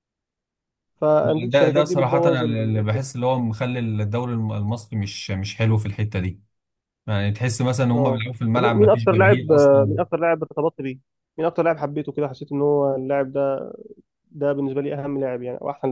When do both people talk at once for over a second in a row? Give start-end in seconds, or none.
1.2-3.0, 7.9-9.9